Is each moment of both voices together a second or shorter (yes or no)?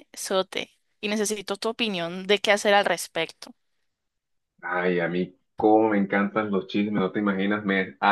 yes